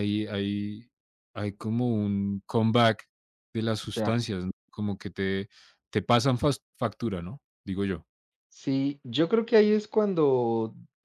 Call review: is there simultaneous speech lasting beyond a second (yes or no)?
no